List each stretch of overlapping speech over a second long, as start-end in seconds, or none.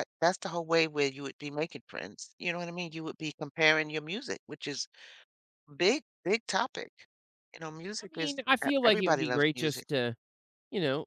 8.0-9.8